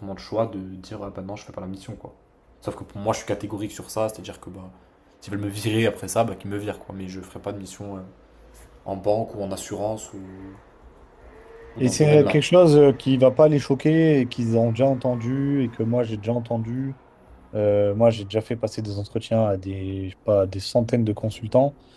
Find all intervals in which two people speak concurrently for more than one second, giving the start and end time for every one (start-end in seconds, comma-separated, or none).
none